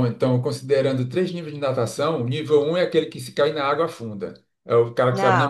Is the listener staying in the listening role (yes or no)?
yes